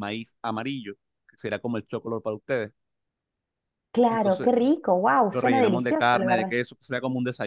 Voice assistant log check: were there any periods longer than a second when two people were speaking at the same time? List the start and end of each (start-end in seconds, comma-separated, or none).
5.3-6.5